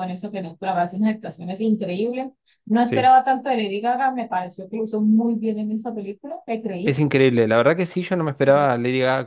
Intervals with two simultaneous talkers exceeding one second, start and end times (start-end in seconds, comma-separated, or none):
none